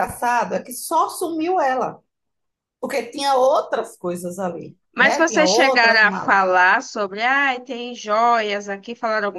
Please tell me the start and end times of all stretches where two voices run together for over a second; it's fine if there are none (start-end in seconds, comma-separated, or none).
5.0-6.4